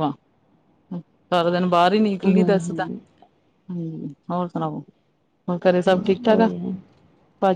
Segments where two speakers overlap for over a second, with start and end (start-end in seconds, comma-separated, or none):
none